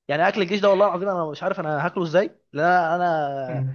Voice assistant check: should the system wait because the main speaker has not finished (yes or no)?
yes